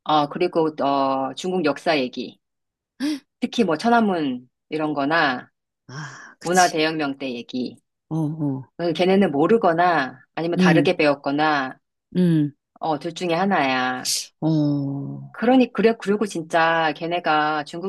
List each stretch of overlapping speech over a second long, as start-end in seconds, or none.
none